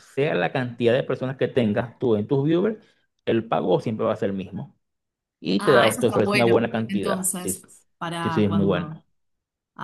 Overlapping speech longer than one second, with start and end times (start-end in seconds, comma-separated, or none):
5.6-8.9